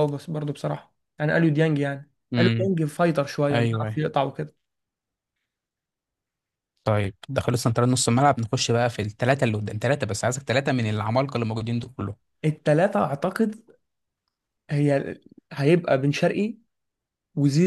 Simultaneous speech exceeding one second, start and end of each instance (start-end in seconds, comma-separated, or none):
none